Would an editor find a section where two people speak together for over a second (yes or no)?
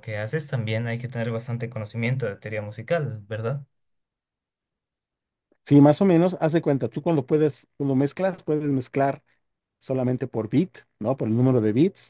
no